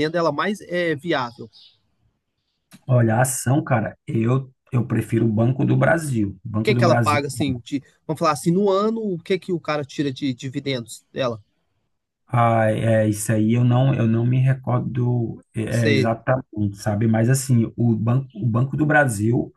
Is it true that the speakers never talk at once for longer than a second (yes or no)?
yes